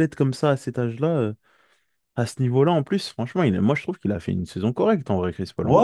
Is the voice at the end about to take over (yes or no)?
yes